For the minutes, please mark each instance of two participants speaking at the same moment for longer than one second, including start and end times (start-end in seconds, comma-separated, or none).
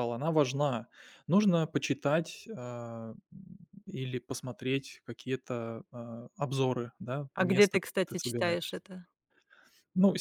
7.3-8.8